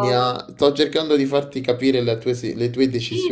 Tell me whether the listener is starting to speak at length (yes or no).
yes